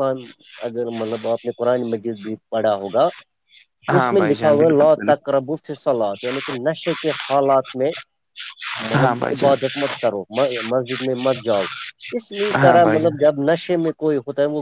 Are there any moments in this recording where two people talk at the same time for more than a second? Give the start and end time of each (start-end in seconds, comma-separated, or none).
4.0-5.3